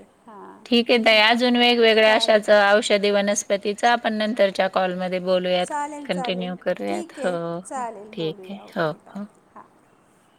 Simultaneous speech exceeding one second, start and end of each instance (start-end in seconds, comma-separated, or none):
5.6-9.2